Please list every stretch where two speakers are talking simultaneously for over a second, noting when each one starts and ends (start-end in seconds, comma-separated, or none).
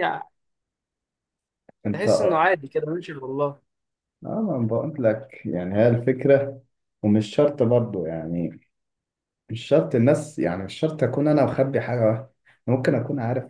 none